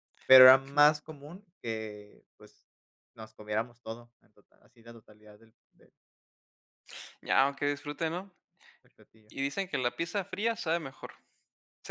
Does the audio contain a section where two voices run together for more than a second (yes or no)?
no